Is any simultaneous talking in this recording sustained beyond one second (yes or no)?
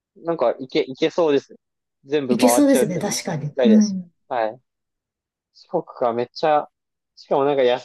yes